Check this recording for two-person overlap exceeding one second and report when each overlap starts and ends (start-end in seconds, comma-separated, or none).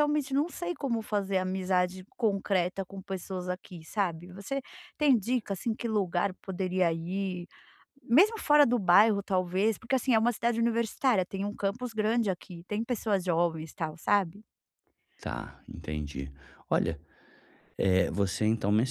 none